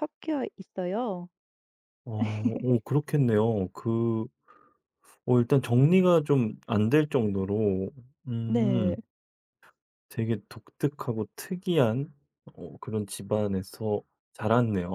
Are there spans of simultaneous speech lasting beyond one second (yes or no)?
no